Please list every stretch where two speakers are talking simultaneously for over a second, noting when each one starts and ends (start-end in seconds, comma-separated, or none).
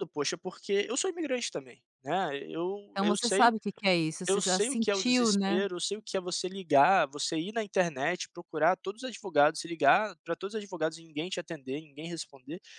4.3-5.6